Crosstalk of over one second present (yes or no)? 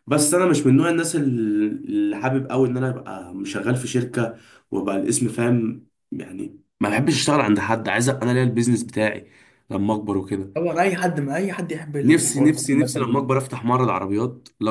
yes